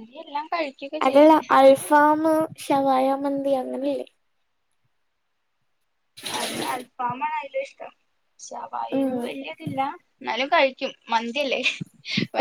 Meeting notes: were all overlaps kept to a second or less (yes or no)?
yes